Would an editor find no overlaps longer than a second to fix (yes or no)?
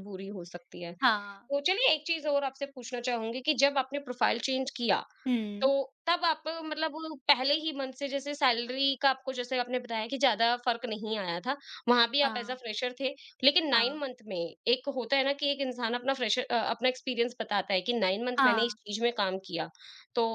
yes